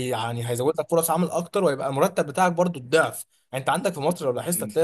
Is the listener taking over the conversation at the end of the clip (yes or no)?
no